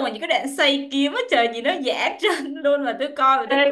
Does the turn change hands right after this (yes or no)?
yes